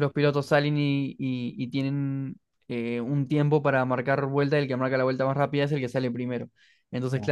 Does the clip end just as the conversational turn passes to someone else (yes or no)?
no